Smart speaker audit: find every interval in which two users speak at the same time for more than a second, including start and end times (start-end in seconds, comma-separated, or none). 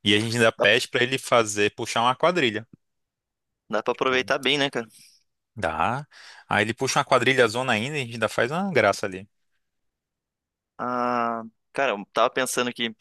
none